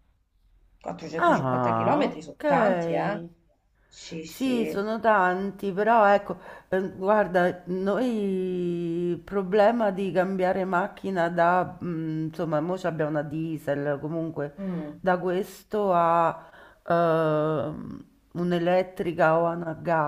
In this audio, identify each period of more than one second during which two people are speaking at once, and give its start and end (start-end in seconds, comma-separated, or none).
1.2-3.2